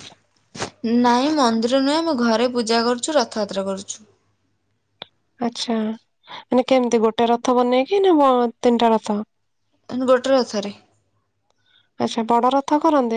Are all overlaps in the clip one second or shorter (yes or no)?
yes